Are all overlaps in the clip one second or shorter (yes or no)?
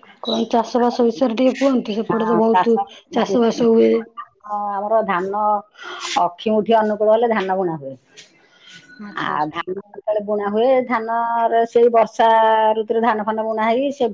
no